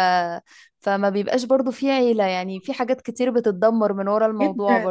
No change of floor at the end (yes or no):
no